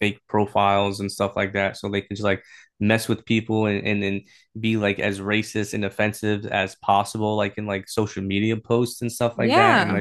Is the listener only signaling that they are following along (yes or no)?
yes